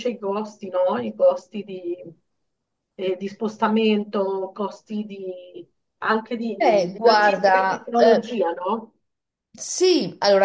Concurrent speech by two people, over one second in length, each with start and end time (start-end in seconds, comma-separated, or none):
6.6-8.3